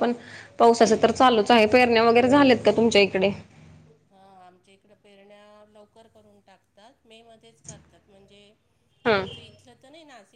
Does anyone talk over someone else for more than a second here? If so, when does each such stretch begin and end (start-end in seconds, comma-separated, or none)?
none